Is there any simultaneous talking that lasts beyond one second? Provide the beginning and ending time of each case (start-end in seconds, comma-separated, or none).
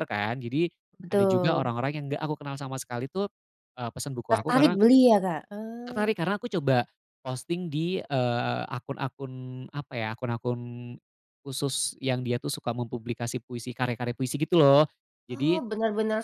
none